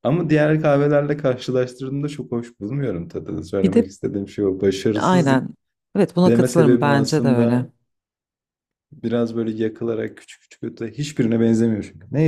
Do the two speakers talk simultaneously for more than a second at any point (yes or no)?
yes